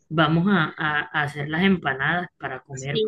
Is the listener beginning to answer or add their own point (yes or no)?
yes